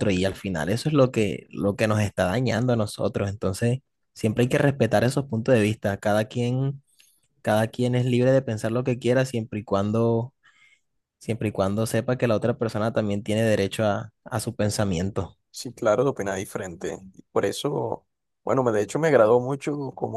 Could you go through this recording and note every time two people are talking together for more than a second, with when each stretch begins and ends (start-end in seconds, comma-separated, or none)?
none